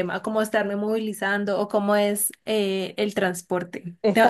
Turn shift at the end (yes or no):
no